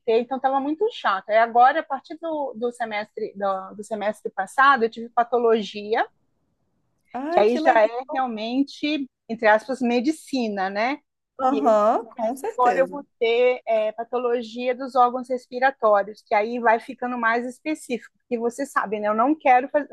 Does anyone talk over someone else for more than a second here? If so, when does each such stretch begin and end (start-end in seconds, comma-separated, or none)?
11.5-13.0